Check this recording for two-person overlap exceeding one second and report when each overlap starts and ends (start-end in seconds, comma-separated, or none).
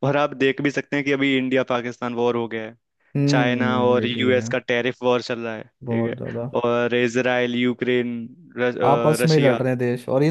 3.3-4.5